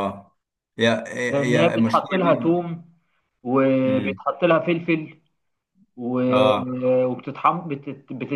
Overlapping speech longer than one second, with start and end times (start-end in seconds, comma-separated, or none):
1.3-2.7